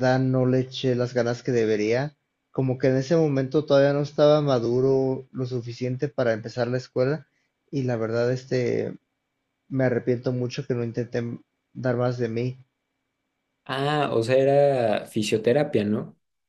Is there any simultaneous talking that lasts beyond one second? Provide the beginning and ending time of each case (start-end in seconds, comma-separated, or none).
none